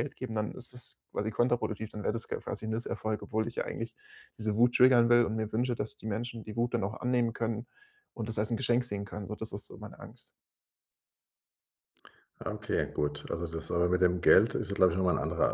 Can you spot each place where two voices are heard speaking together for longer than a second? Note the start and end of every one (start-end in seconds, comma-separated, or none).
none